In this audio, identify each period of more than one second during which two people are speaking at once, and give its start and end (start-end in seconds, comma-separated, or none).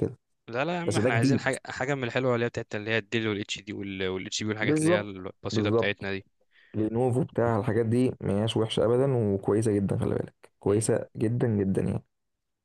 4.6-6.1